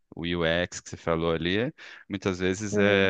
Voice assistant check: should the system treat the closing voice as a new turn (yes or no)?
no